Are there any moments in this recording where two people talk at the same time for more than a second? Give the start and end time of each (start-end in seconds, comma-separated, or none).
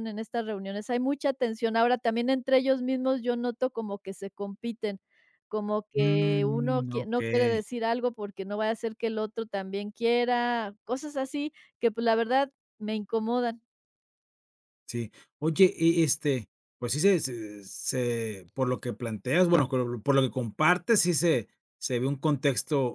6.0-7.6